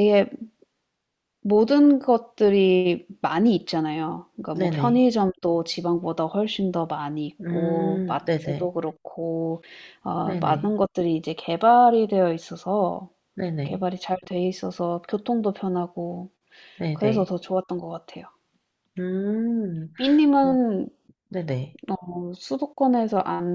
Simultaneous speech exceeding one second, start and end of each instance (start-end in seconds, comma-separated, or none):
7.4-8.7